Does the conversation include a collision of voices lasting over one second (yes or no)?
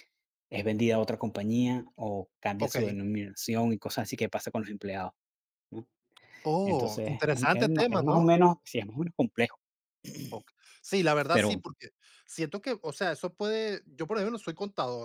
yes